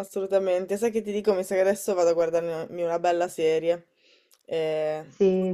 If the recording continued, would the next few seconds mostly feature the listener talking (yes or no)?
yes